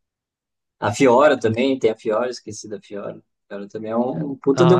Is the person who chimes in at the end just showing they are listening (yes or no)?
no